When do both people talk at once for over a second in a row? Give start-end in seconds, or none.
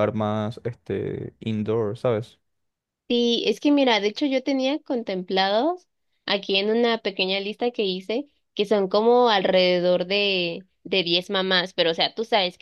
none